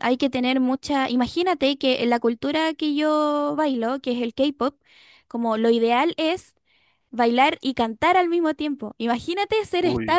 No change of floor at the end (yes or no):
yes